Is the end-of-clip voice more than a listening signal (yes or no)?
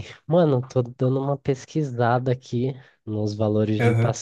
no